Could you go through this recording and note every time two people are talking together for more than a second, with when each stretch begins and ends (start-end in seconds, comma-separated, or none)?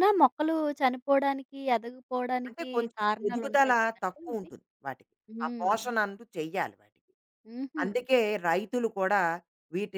2.5-4.5